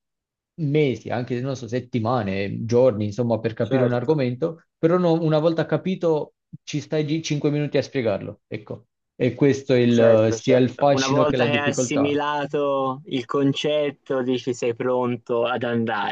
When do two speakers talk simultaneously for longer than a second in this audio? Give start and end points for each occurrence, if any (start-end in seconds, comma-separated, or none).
9.8-12.2